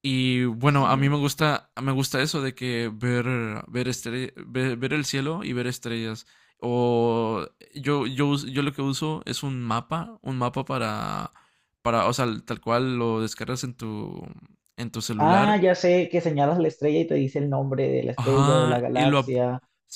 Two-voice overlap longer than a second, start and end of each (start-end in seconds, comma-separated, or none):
18.2-19.4